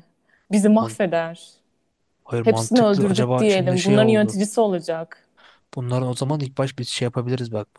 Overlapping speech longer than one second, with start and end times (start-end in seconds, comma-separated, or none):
2.4-4.4